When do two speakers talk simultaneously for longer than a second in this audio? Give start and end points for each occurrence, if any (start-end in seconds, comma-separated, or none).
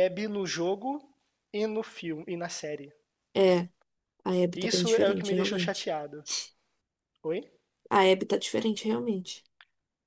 4.5-5.9